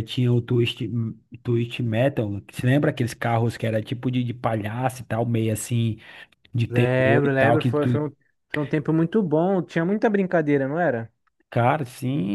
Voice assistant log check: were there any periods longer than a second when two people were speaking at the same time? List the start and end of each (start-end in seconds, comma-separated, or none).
6.7-8.0